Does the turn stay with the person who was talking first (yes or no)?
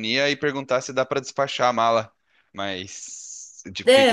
yes